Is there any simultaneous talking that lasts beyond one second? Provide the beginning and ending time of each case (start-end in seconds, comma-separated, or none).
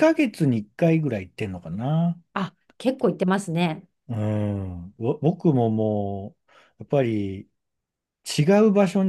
none